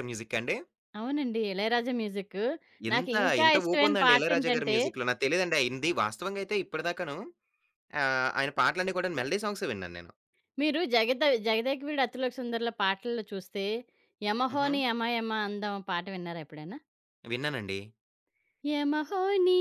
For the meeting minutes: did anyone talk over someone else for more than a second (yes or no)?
yes